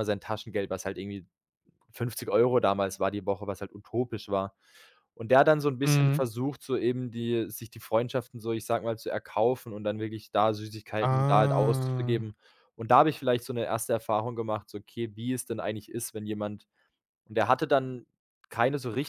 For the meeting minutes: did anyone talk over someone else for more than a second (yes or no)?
yes